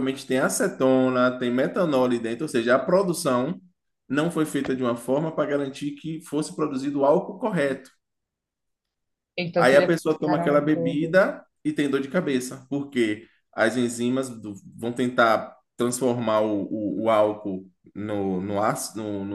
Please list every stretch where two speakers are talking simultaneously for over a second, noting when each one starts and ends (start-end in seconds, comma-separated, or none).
9.6-11.2